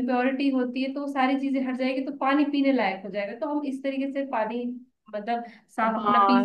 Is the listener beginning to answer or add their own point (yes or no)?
yes